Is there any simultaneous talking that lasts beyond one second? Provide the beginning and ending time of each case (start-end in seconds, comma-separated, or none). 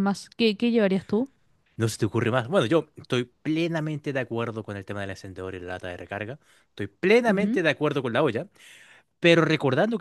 none